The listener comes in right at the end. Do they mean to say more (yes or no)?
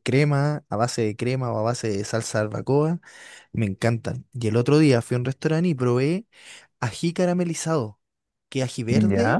no